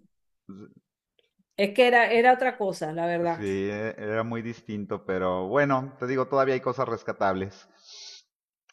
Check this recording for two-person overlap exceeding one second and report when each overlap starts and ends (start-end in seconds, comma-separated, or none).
none